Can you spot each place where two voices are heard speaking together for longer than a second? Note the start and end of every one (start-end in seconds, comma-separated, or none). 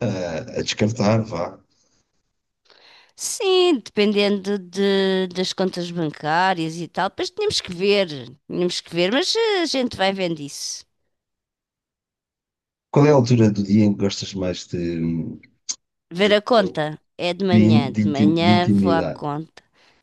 17.5-19.2